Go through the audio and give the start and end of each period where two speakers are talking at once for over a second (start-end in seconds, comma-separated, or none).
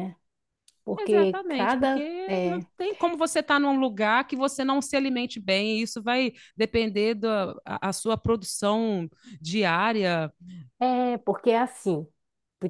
1.0-2.6